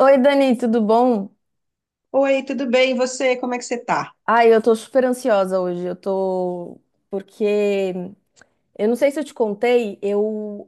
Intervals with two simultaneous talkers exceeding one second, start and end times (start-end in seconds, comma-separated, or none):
none